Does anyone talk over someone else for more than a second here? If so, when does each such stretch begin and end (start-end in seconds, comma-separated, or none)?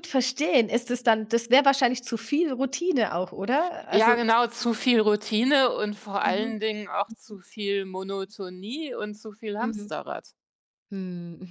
none